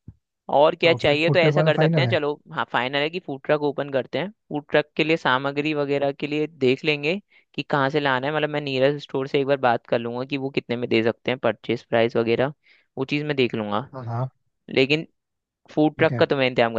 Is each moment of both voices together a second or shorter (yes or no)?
no